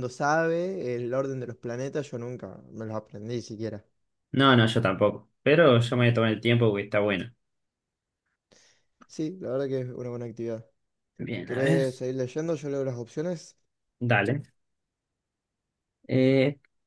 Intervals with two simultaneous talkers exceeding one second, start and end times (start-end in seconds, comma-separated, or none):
none